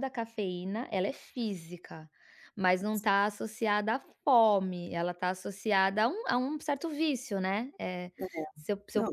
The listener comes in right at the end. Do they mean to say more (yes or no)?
no